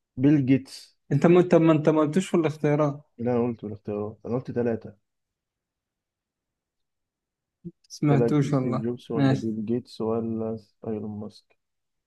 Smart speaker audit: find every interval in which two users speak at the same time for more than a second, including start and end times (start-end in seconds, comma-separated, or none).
8.1-9.5